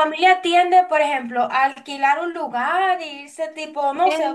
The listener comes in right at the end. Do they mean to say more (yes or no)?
no